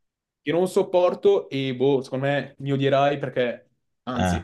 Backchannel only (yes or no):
yes